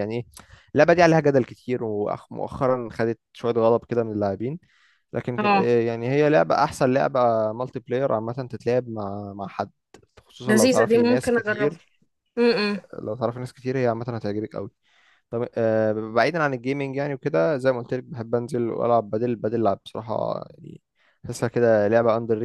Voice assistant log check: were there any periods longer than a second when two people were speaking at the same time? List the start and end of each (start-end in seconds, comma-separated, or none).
10.4-11.8